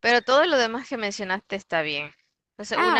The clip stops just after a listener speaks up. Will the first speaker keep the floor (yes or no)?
yes